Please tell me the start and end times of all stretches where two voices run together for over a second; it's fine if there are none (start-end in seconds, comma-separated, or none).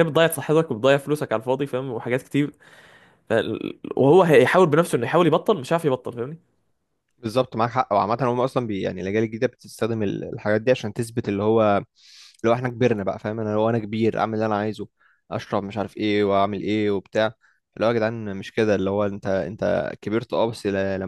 none